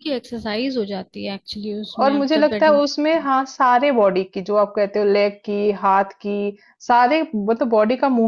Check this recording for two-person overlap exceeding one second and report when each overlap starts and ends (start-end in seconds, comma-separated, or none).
2.0-3.3